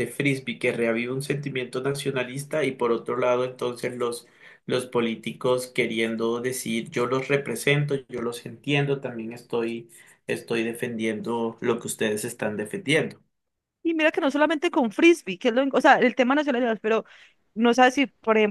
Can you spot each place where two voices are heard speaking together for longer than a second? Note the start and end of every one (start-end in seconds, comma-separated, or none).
none